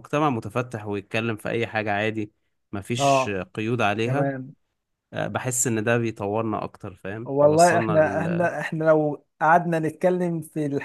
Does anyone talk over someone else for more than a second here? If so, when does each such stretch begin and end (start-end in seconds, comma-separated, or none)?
7.2-8.5